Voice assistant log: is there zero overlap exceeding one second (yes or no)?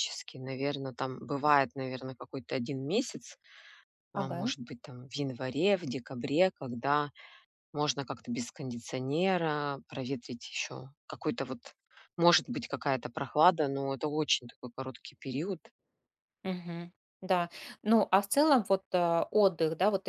yes